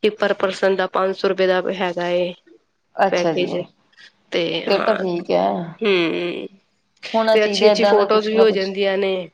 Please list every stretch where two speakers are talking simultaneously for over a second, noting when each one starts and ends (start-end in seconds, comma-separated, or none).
7.3-8.7